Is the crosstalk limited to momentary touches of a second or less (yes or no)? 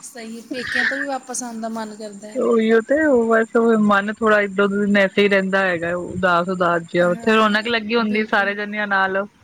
no